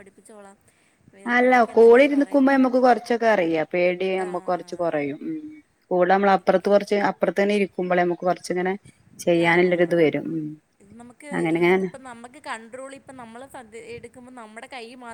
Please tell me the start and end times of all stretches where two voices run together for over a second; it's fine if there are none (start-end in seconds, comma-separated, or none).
none